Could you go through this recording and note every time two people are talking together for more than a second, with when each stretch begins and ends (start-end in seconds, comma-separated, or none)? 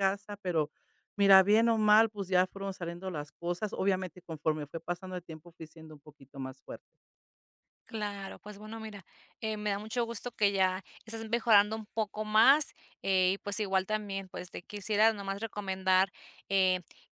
none